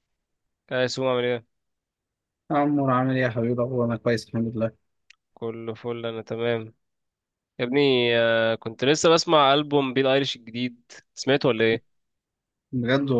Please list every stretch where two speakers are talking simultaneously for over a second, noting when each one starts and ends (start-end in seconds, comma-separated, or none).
none